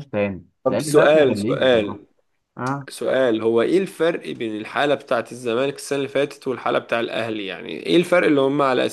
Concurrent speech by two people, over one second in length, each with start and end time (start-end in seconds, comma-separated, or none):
0.6-2.0